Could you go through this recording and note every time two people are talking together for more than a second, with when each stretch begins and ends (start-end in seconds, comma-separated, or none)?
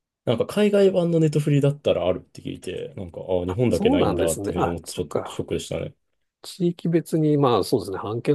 3.5-5.4